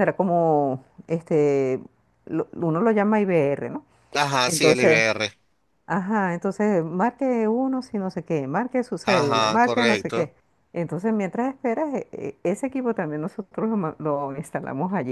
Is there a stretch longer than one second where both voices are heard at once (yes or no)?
yes